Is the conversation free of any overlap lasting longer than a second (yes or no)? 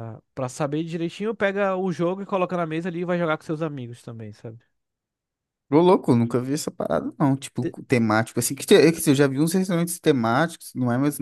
yes